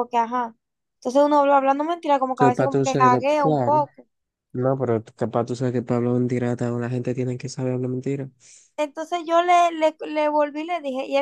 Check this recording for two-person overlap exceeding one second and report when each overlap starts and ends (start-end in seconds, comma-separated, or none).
2.4-3.9